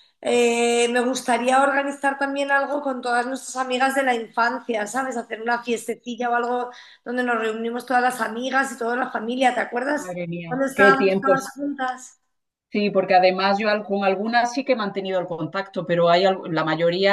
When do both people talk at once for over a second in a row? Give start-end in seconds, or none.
9.9-11.5